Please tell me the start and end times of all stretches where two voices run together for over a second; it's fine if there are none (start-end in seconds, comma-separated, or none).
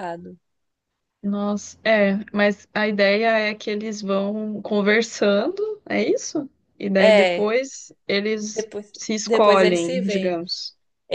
8.5-10.4